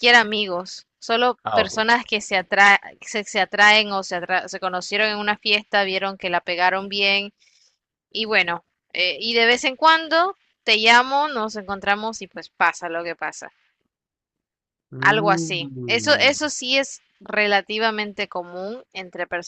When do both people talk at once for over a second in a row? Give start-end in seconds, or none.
15.0-16.3